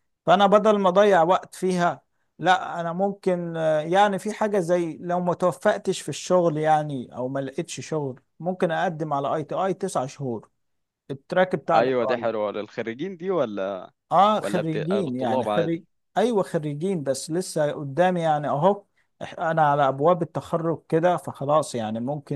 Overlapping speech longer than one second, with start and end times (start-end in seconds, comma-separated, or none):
14.4-15.8